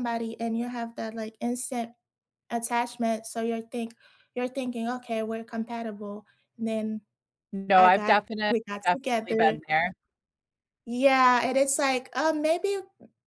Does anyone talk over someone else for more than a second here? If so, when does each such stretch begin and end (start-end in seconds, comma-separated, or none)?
7.8-9.6